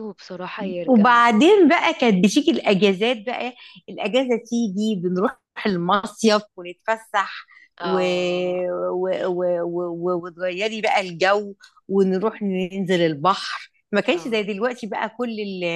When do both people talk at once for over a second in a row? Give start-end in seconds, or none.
none